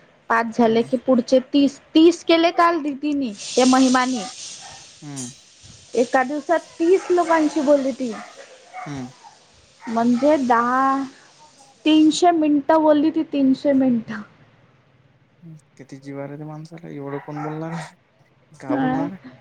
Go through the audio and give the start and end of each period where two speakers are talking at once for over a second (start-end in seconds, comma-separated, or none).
none